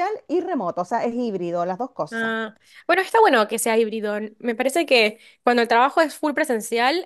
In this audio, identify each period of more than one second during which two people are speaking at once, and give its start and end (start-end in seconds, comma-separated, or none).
none